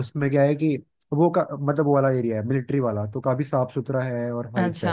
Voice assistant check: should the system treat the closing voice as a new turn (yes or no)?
yes